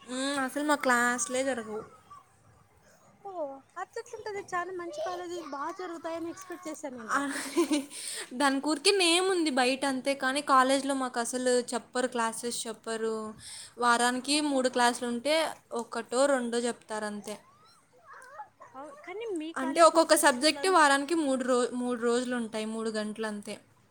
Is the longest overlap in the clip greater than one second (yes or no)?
no